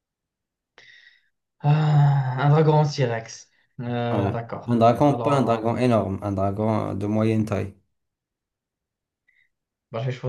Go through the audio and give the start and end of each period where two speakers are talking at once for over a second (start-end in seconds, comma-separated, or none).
4.1-5.8